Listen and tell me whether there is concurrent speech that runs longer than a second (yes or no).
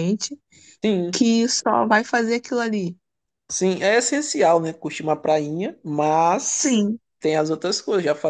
no